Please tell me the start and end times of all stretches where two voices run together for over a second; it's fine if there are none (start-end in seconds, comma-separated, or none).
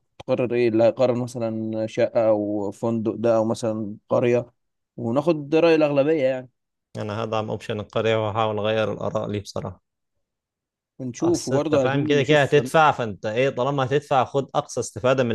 11.2-12.6